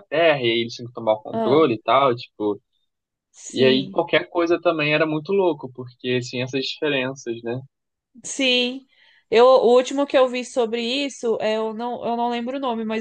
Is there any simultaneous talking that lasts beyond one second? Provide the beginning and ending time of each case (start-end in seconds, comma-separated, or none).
none